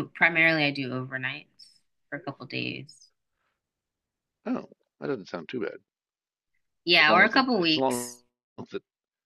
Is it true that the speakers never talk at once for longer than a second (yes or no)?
no